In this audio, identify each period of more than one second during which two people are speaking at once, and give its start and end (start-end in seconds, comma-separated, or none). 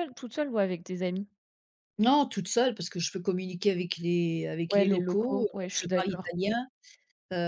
4.7-6.3